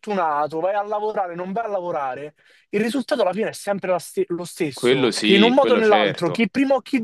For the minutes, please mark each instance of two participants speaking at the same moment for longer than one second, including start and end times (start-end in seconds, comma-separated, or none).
4.7-6.5